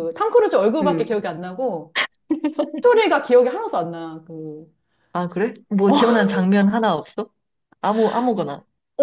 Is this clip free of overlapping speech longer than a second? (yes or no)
yes